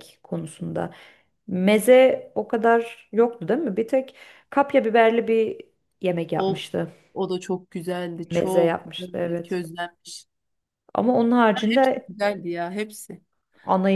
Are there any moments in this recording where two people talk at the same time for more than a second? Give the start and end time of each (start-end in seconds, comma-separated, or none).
8.3-9.6